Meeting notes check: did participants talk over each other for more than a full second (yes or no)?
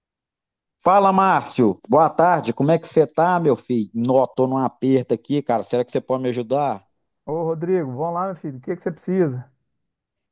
no